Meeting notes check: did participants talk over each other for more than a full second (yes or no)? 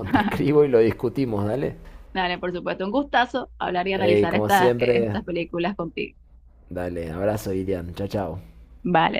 yes